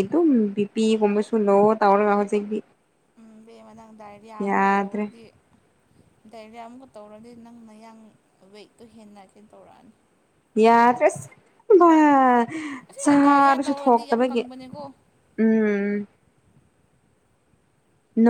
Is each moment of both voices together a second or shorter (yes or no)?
no